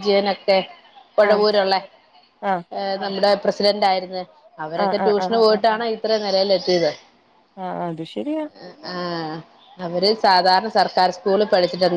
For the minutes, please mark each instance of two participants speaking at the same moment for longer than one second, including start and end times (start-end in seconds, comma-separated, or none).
none